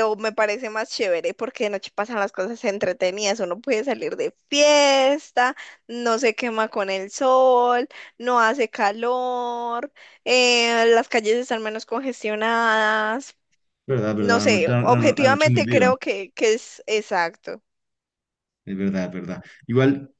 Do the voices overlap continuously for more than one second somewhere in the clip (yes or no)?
yes